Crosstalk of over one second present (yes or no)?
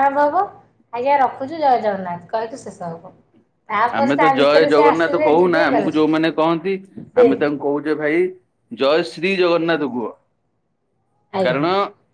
yes